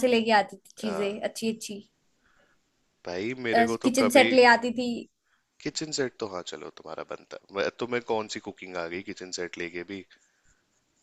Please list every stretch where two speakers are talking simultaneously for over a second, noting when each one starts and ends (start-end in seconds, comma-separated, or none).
none